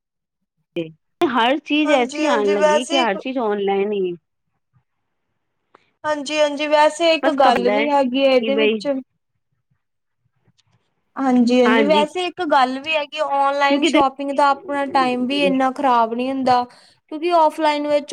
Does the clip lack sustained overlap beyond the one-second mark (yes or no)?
no